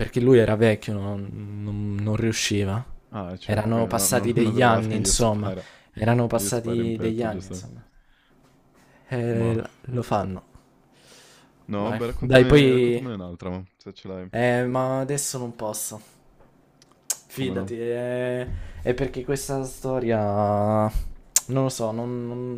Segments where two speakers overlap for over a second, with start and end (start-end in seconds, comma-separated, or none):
3.4-5.5, 6.3-7.7, 11.8-13.1